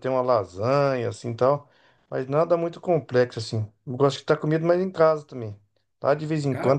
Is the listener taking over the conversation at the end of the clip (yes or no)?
no